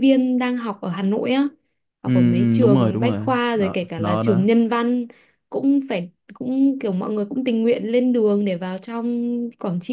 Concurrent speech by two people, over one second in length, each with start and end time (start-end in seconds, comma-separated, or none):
2.0-4.5